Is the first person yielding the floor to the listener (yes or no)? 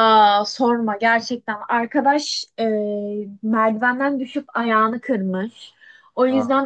no